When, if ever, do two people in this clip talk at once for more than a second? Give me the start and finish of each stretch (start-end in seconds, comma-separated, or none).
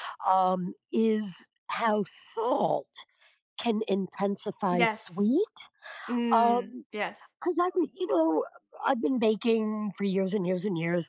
none